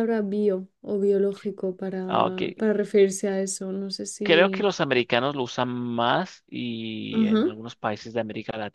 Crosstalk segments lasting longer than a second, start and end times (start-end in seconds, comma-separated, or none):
none